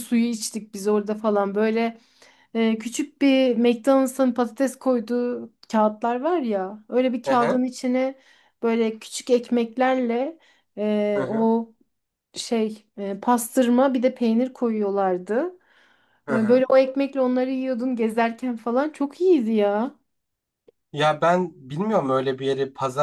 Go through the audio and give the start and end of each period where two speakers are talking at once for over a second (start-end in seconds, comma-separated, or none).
none